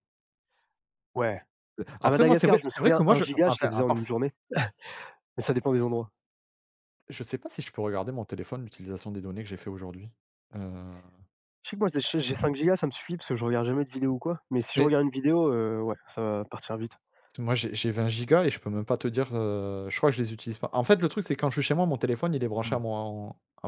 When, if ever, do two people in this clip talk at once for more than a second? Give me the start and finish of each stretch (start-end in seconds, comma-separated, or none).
2.0-4.0